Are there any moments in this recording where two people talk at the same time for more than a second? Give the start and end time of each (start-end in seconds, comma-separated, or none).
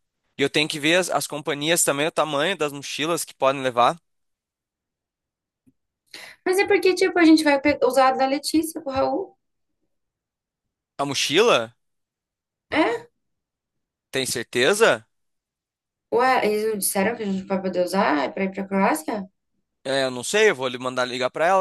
none